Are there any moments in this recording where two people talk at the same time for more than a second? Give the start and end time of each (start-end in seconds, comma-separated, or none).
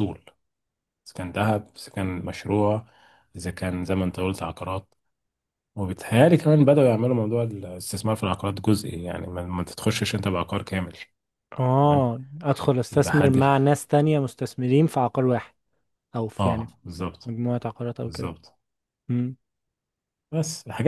none